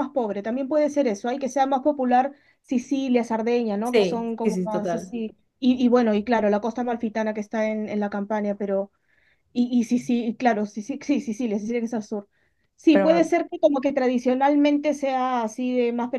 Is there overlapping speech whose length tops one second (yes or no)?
yes